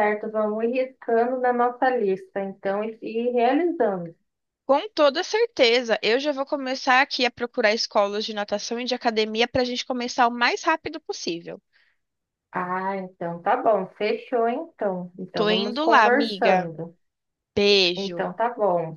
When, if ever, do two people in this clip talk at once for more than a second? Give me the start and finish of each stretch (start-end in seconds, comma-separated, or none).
15.3-16.7